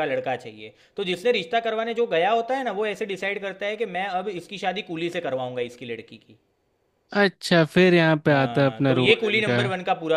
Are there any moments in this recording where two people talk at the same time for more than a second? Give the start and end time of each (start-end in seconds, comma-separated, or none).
8.3-9.6